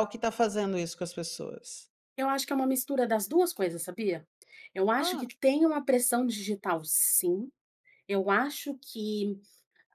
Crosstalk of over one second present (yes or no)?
no